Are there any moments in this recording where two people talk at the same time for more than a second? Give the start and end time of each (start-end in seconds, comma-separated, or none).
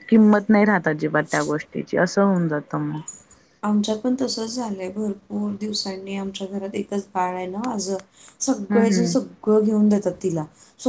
none